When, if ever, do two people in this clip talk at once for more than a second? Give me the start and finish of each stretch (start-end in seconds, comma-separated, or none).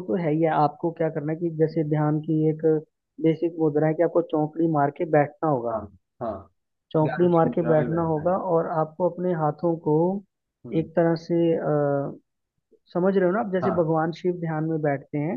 7.0-8.3